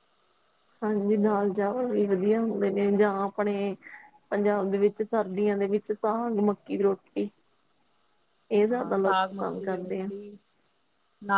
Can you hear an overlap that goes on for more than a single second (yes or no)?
yes